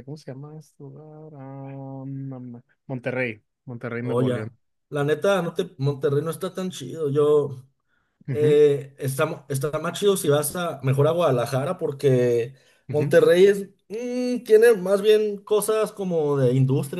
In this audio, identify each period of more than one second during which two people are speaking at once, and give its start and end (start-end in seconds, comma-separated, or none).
none